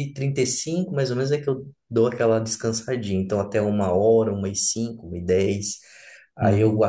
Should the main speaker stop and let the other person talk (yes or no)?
no